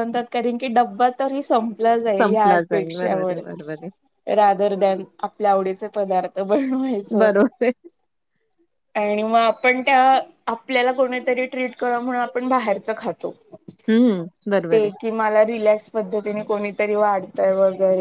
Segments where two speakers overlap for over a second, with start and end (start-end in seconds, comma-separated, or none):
2.2-3.4